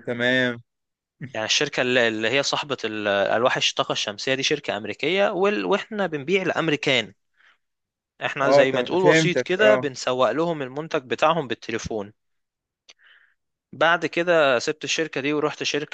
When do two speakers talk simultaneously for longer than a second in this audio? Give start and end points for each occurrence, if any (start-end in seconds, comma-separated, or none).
8.4-9.9